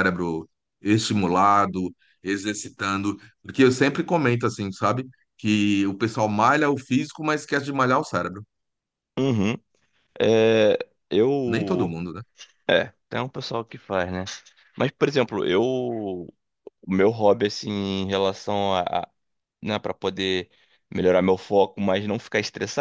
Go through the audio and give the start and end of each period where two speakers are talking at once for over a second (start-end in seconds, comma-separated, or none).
none